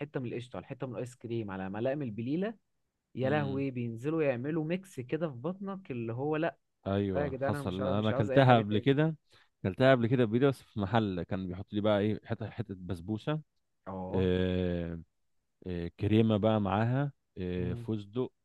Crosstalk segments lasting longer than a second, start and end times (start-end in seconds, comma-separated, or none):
7.2-8.9